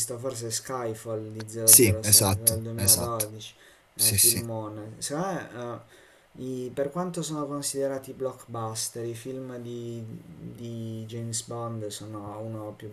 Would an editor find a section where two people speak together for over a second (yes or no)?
yes